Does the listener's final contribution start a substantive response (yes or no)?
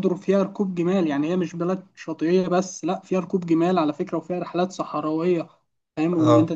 yes